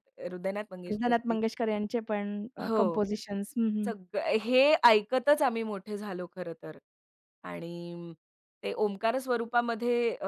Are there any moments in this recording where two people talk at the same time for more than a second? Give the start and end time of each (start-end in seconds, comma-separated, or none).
none